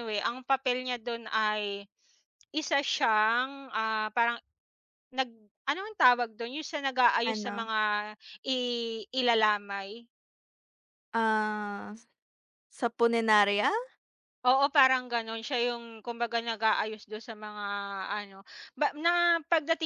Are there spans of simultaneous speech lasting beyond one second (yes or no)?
no